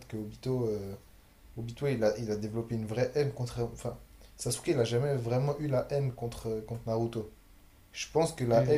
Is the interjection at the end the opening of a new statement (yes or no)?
no